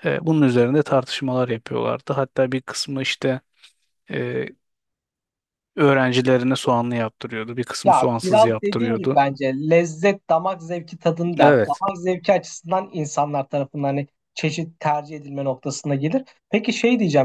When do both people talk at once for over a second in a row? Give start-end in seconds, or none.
7.8-9.2